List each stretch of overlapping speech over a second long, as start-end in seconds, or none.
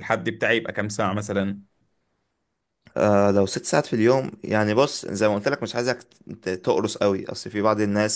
none